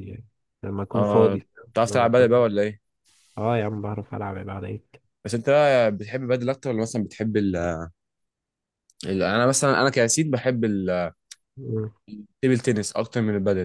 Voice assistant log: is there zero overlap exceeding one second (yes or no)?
no